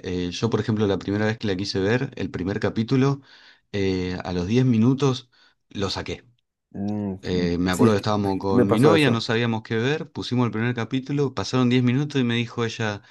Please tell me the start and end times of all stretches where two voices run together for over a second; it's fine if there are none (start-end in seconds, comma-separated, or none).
7.7-9.3